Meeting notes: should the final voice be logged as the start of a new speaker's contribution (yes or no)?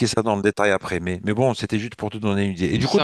no